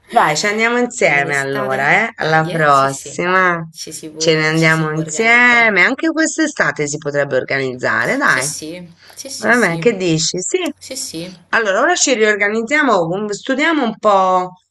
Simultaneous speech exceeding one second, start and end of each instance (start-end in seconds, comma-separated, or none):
1.2-3.2, 4.2-5.8